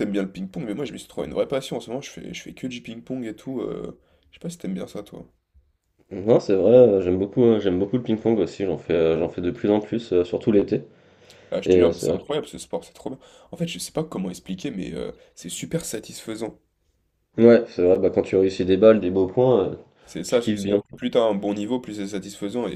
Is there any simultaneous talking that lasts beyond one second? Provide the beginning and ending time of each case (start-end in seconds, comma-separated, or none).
none